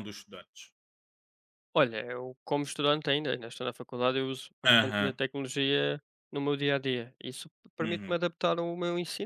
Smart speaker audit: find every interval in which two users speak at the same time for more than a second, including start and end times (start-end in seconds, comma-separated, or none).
none